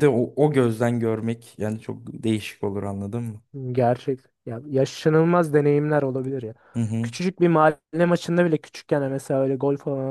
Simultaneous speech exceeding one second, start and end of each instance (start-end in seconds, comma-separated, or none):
none